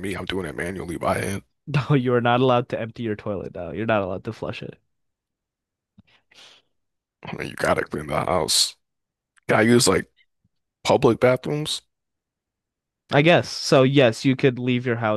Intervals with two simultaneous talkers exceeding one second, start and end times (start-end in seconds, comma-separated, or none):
none